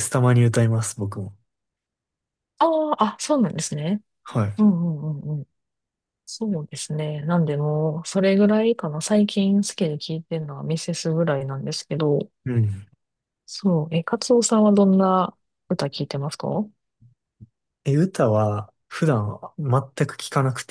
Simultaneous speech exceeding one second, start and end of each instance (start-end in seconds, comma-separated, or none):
none